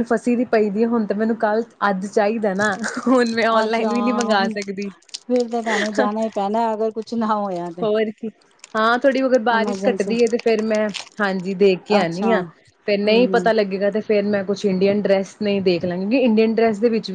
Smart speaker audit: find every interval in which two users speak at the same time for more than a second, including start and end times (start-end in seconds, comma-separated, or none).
none